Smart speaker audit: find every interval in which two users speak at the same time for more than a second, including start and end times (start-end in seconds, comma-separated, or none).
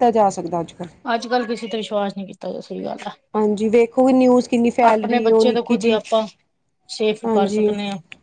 none